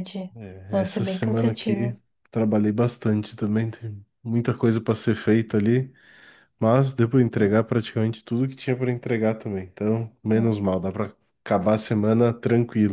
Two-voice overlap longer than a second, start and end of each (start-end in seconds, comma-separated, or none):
0.7-2.0